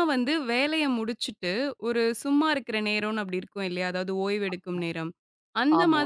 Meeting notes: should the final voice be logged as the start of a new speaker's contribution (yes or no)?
no